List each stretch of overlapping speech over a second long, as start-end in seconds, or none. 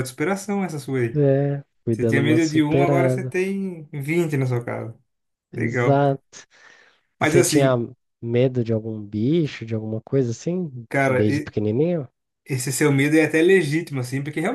1.9-3.3